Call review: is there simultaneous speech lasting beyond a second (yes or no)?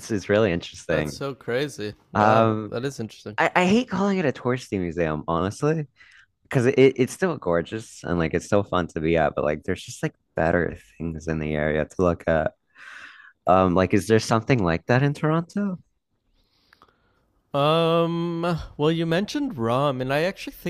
no